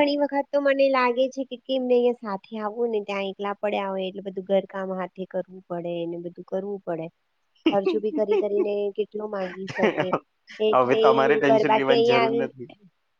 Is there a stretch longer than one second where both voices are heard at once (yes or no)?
yes